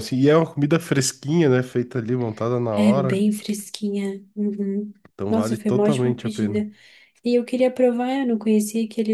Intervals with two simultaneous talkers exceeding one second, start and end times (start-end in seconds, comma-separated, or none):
5.3-6.6